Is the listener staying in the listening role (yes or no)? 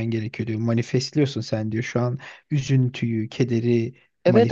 no